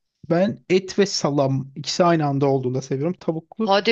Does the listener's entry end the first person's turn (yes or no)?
yes